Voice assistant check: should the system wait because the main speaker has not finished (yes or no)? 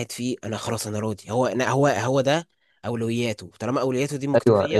no